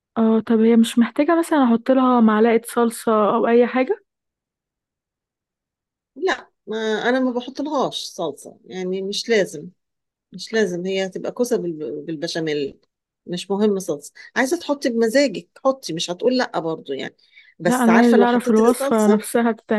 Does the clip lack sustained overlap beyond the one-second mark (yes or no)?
no